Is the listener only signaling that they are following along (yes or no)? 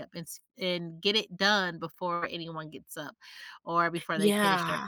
yes